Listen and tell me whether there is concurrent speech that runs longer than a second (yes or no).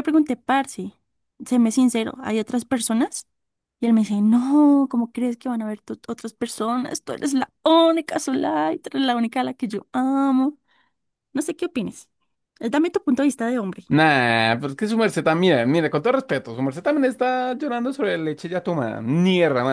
no